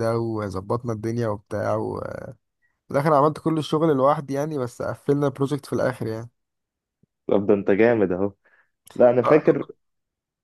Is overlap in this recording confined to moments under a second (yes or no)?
yes